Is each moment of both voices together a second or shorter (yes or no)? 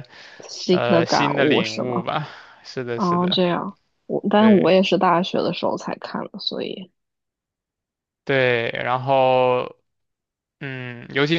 no